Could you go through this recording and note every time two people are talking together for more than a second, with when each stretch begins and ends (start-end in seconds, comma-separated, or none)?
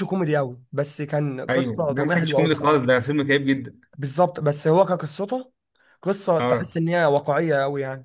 1.5-2.9